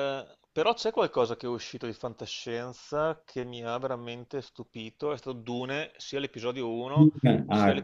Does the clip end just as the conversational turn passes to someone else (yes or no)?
no